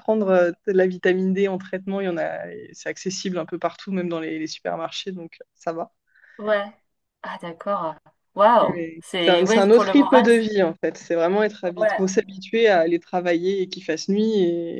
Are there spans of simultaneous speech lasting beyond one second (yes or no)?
yes